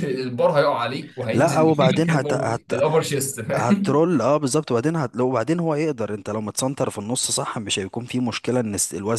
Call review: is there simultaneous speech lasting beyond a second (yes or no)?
yes